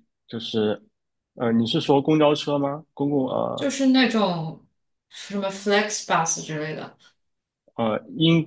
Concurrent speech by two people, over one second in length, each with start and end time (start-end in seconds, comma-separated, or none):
none